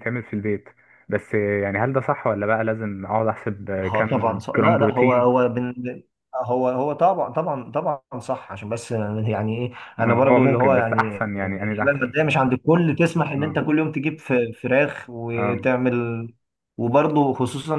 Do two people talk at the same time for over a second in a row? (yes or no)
yes